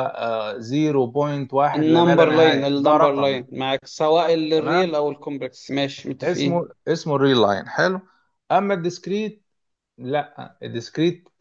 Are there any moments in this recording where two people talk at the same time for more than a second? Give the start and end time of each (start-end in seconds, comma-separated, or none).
1.7-3.4